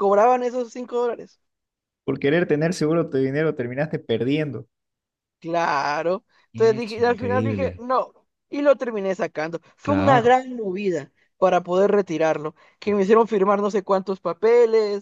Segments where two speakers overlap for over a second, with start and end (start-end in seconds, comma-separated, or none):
6.5-7.8